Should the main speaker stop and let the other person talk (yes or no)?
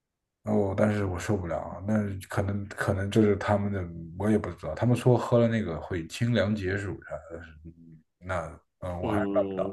yes